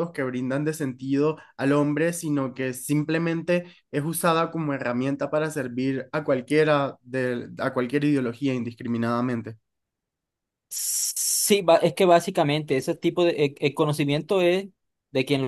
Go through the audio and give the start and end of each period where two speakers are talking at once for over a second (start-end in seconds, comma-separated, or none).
none